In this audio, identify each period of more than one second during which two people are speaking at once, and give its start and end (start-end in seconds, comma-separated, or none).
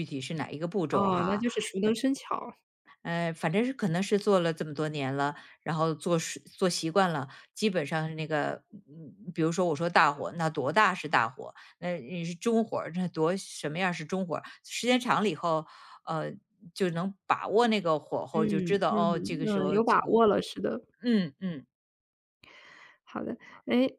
18.3-20.3